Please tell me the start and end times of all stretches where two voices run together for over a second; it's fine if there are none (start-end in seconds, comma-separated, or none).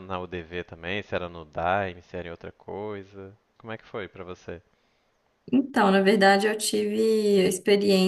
none